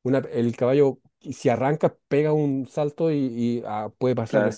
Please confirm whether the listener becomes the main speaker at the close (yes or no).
no